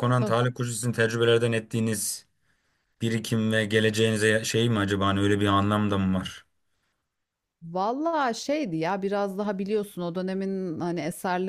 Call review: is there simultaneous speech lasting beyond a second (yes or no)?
no